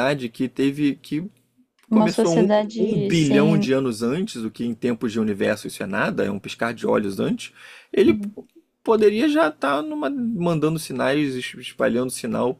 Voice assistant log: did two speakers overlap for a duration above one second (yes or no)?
yes